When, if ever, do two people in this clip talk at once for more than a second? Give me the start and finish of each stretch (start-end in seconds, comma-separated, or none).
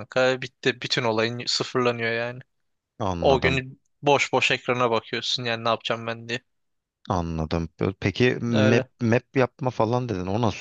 none